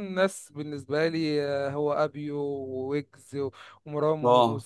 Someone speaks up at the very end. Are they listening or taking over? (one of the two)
listening